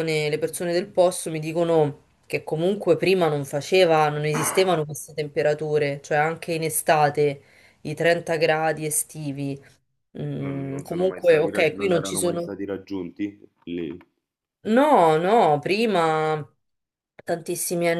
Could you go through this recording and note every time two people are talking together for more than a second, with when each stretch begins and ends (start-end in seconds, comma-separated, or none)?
10.4-12.5